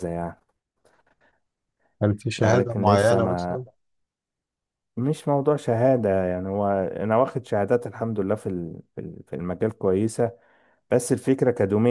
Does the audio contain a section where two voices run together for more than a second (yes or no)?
yes